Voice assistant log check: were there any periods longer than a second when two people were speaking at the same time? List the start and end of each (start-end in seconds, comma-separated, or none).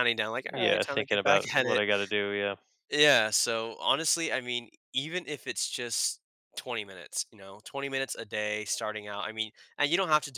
0.5-1.8